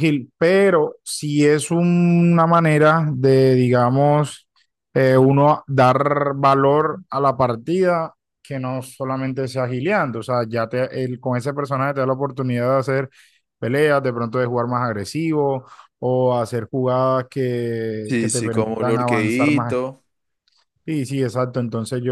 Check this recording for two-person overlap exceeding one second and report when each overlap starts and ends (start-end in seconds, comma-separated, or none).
18.1-19.8